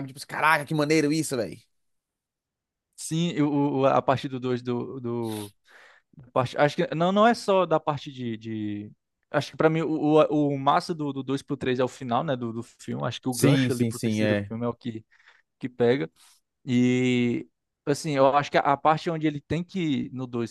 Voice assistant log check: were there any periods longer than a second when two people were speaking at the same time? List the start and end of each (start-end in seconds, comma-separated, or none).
13.3-14.5